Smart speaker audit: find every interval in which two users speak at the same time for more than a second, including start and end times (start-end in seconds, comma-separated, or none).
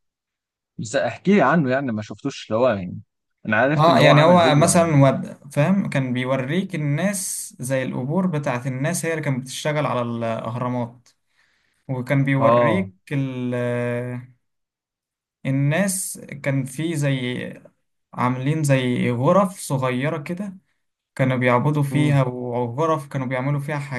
3.8-5.0